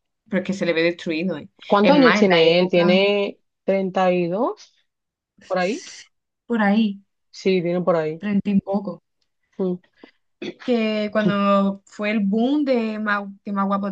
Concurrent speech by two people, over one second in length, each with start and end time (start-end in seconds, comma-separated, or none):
1.7-3.0